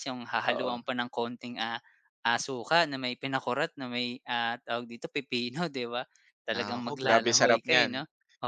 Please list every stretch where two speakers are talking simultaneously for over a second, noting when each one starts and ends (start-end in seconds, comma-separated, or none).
6.5-7.9